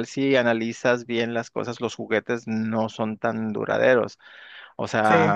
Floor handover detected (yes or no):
no